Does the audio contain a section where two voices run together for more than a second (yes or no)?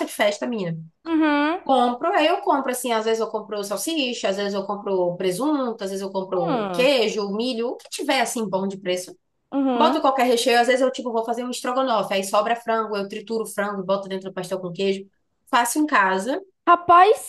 no